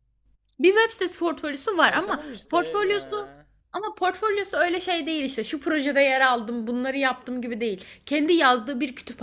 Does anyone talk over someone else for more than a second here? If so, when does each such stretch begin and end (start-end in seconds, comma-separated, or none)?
1.8-3.2